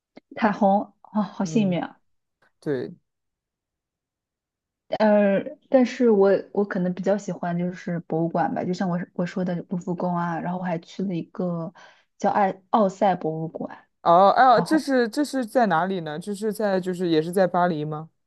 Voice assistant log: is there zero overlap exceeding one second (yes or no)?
yes